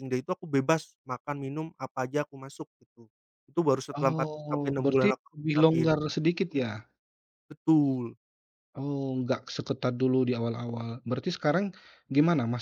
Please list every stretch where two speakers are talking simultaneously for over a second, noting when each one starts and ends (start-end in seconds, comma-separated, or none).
4.0-5.9